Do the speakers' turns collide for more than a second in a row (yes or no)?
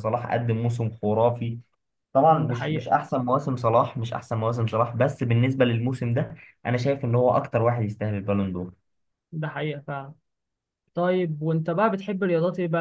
no